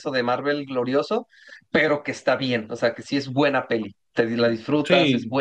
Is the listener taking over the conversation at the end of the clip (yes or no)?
no